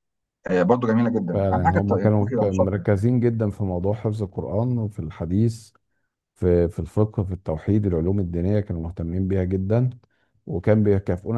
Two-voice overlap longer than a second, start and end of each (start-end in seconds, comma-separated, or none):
1.3-3.1